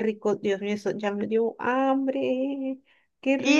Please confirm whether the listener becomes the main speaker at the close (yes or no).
yes